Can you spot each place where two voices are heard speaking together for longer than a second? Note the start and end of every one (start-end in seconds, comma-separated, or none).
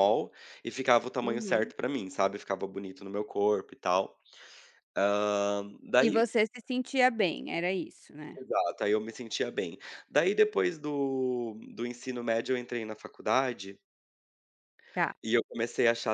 none